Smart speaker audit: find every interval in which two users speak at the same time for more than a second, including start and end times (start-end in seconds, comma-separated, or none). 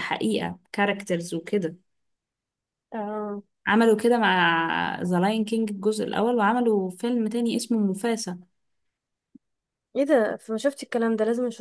none